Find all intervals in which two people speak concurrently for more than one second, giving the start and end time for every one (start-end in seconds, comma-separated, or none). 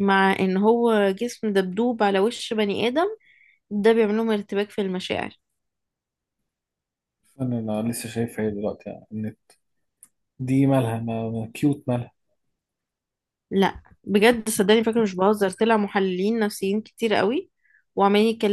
none